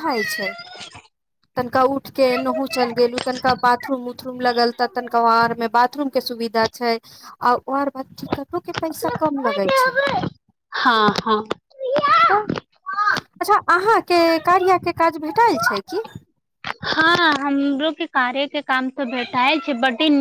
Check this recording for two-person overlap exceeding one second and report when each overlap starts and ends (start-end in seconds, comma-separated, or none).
none